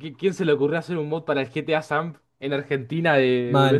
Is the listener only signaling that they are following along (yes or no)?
no